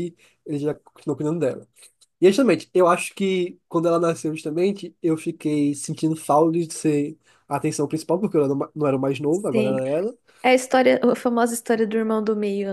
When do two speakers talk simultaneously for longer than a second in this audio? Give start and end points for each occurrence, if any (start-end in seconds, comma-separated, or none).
none